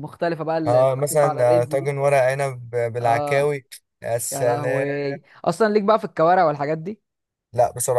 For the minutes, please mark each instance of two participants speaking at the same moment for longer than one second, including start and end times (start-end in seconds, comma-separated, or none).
0.7-1.9